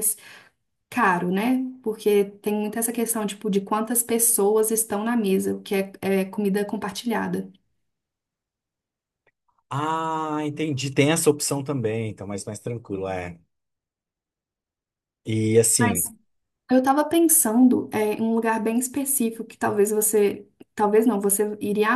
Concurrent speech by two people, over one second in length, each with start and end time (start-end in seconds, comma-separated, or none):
none